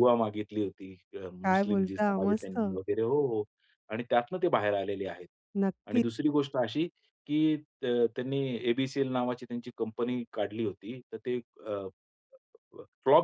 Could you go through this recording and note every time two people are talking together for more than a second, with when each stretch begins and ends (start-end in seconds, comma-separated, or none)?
1.4-2.8